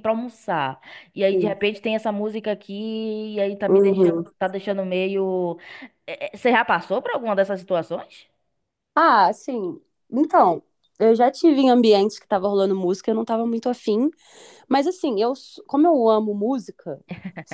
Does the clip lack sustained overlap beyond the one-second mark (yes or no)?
yes